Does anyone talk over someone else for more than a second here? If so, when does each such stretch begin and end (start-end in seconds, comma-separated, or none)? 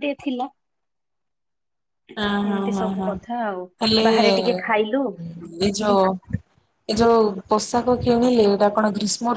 none